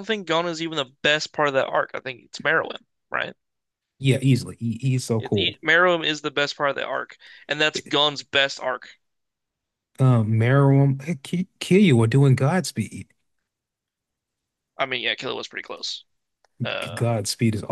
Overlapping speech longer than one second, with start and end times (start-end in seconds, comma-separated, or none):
none